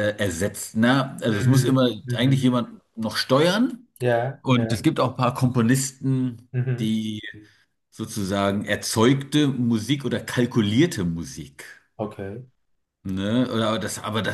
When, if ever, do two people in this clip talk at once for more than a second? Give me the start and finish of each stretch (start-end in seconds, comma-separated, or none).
1.3-2.6